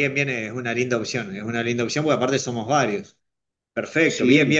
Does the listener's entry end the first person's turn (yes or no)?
no